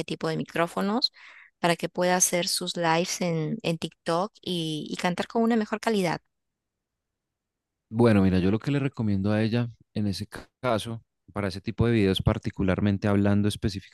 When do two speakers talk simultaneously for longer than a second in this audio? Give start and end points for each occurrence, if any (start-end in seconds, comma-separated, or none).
none